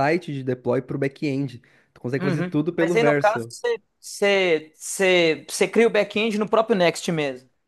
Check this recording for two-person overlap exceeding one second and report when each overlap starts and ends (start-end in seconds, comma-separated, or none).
2.2-3.5